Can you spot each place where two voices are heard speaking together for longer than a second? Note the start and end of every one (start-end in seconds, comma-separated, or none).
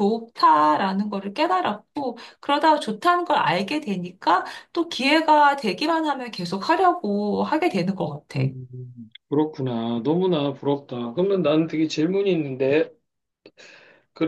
none